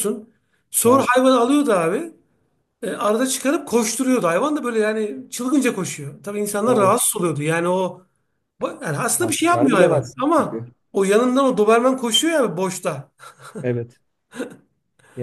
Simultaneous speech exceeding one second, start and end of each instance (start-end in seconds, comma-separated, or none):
9.2-10.7